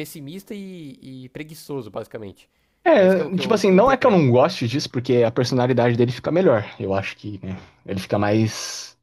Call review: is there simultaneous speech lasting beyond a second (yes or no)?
yes